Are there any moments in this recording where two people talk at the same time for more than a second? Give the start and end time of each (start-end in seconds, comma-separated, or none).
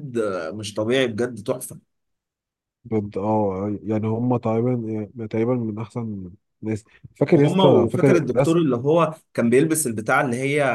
7.3-8.6